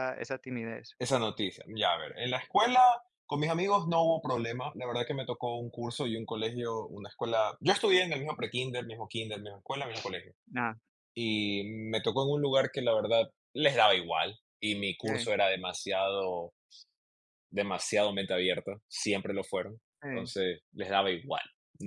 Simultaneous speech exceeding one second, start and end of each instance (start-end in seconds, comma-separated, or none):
none